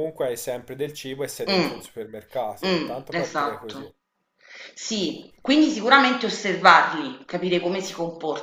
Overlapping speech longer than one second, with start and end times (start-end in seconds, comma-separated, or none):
2.6-3.9